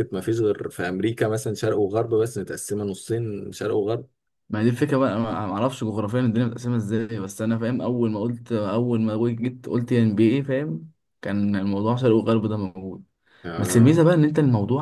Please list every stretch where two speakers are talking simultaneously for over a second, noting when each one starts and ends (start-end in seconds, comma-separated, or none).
none